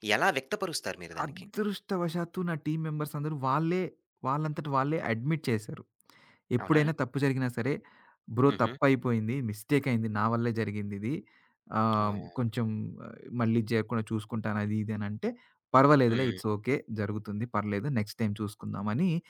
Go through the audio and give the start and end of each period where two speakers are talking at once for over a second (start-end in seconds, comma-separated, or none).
none